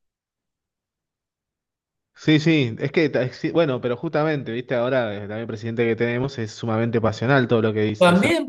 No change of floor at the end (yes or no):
no